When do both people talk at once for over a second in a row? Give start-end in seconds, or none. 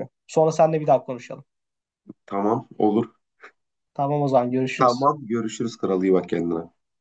none